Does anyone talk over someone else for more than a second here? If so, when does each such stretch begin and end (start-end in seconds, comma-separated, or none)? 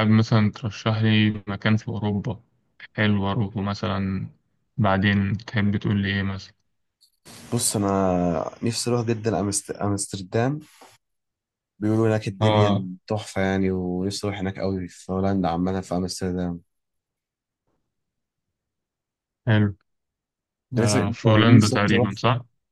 20.8-22.1